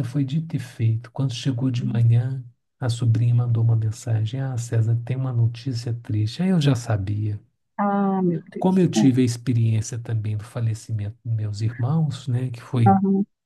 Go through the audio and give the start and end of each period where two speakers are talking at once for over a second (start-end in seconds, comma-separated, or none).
none